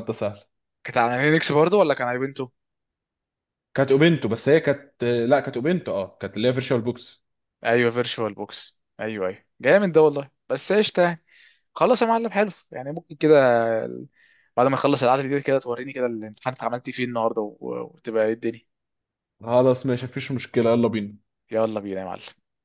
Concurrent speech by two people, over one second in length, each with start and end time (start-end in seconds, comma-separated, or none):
none